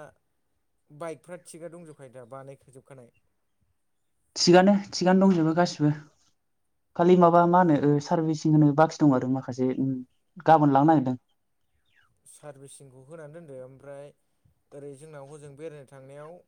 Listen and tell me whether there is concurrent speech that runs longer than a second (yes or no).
no